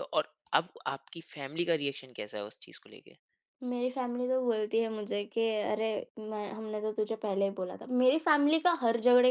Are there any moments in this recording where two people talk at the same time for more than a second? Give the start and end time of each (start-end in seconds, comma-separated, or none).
none